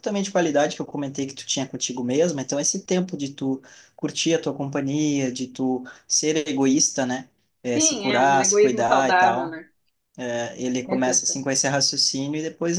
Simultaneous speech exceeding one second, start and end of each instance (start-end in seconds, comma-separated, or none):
7.8-9.6